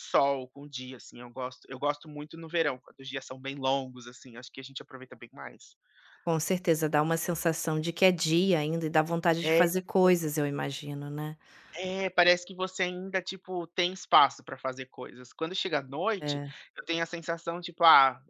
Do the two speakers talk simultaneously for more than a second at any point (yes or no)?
no